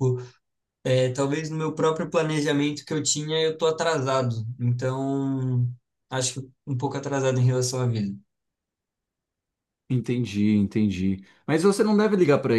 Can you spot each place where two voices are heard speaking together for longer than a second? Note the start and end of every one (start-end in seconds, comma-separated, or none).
none